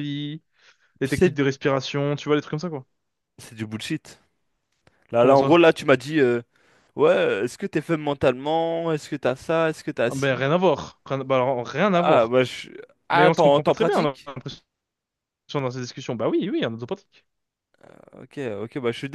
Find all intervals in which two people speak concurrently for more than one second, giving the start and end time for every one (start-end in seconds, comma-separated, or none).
13.1-14.3